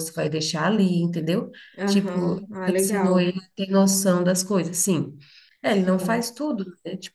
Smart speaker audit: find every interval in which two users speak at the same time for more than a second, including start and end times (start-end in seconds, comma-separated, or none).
1.8-3.3